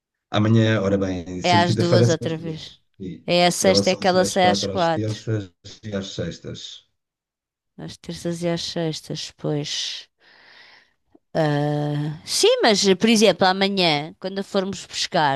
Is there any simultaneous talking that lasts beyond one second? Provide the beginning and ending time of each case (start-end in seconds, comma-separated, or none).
1.4-2.8, 3.6-5.2